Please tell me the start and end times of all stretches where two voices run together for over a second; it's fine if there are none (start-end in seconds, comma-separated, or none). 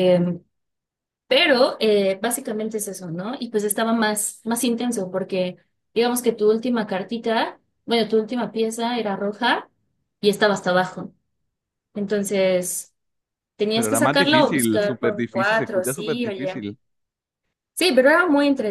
13.7-16.6